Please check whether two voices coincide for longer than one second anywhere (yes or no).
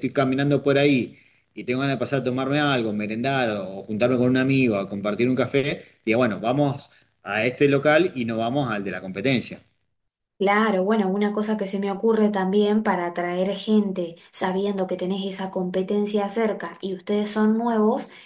no